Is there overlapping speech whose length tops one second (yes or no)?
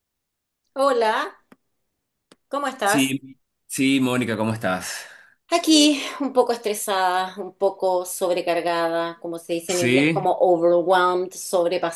no